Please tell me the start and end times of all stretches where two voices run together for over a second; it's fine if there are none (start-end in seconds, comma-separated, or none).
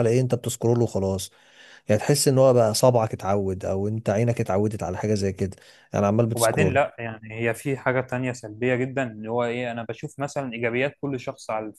none